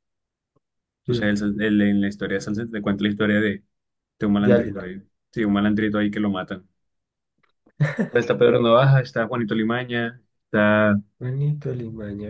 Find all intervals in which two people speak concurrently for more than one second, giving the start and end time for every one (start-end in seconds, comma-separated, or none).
none